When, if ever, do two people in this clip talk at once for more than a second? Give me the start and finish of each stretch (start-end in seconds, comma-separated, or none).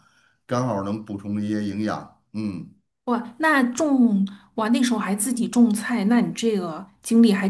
none